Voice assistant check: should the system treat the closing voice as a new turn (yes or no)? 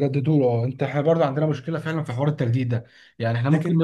no